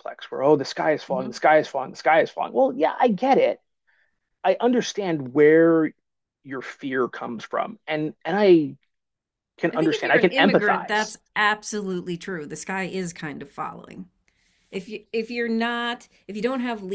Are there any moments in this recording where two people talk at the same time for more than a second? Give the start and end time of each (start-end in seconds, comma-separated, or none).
9.7-11.2